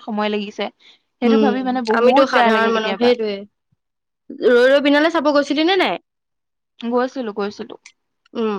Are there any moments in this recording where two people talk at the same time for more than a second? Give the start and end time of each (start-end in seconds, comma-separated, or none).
1.3-3.1